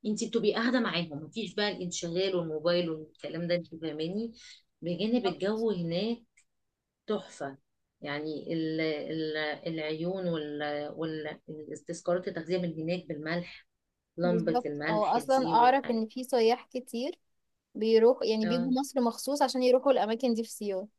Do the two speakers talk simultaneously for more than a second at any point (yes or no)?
yes